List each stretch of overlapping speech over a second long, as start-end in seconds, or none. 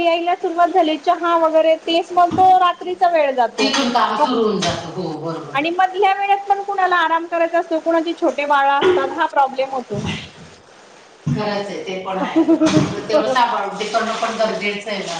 none